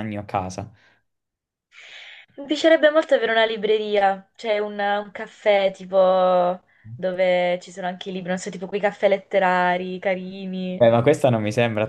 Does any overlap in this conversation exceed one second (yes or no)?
no